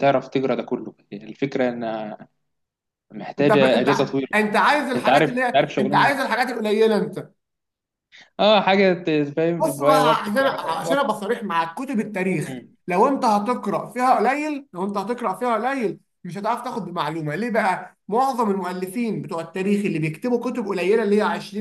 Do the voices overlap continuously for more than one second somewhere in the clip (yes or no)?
yes